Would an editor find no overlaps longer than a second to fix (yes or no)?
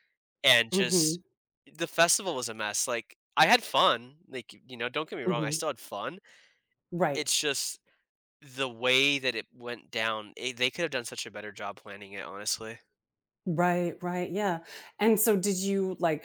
yes